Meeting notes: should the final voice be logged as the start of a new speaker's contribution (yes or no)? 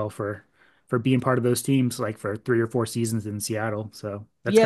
yes